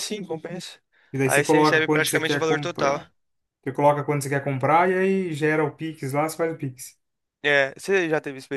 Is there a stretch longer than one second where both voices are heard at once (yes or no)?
yes